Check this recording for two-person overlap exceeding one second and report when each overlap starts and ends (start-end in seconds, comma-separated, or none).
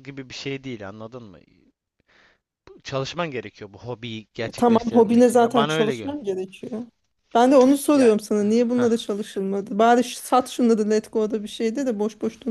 4.6-6.2